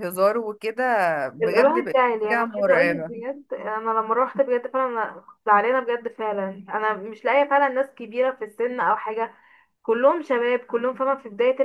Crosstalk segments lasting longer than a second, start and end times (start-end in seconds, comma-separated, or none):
1.4-3.1